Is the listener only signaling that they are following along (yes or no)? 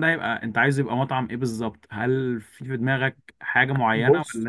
no